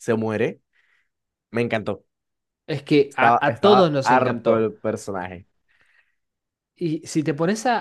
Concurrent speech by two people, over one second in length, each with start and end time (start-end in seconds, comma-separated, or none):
3.1-4.7